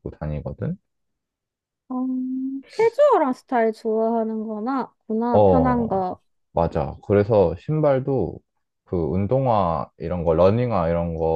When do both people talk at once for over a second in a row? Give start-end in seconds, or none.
none